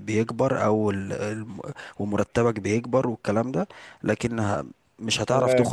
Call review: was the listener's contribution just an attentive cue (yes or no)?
yes